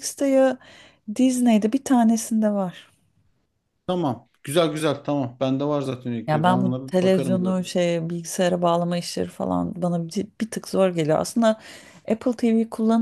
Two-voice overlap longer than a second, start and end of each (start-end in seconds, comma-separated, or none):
6.3-7.5